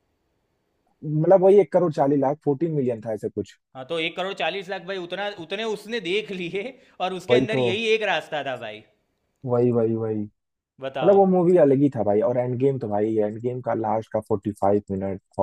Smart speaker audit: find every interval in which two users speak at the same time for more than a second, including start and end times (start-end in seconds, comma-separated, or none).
none